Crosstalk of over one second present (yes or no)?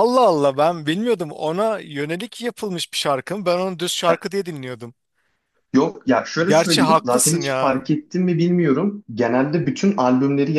yes